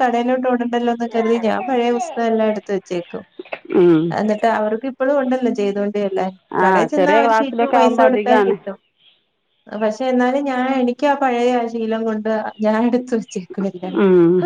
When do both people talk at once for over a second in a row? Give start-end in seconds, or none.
6.6-8.6